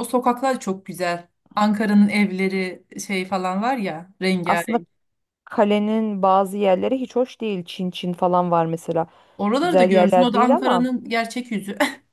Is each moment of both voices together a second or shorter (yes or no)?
no